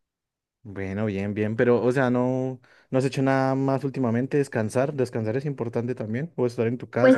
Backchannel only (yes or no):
no